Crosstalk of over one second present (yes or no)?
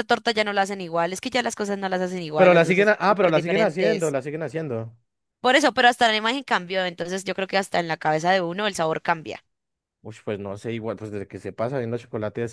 yes